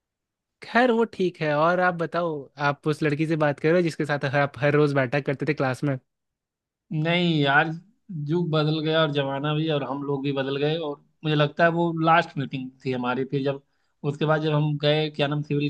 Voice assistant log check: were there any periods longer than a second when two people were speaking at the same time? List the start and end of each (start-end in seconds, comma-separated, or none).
none